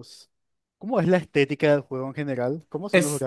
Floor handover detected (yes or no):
yes